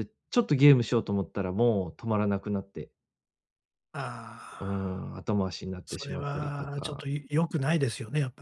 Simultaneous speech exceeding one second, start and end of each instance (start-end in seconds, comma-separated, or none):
5.8-7.1